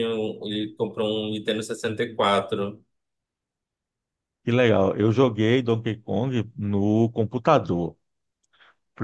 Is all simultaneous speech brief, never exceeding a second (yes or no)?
yes